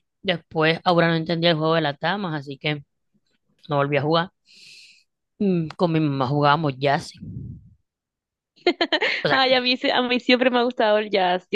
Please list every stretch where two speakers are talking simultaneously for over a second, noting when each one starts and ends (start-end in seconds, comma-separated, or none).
none